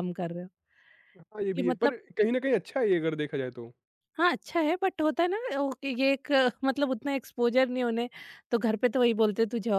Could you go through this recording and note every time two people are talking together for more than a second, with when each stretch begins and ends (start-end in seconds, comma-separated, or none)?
none